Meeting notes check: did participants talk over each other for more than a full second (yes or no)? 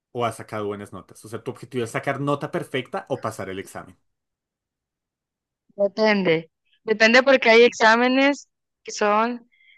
no